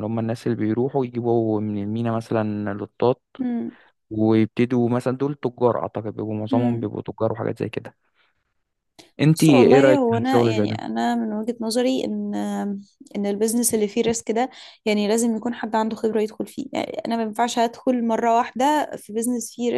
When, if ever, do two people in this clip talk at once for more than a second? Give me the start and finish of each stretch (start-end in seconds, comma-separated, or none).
9.3-10.8